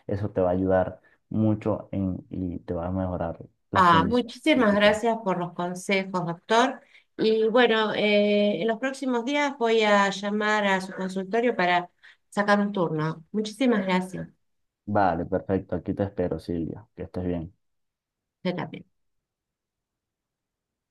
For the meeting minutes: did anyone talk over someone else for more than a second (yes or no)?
yes